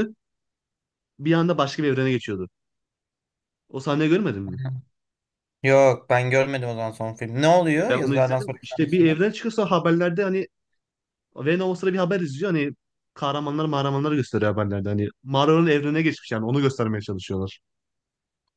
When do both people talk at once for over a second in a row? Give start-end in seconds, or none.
7.8-9.2